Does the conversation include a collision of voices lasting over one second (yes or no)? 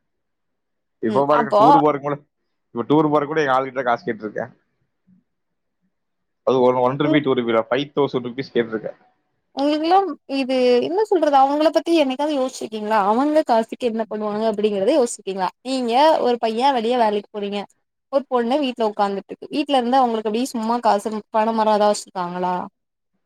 no